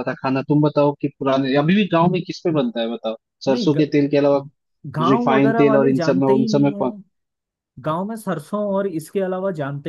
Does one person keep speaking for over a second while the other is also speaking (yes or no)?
yes